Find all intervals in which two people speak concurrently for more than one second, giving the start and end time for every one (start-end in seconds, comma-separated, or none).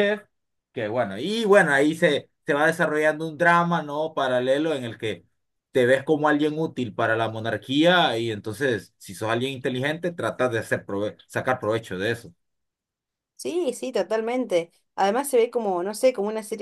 none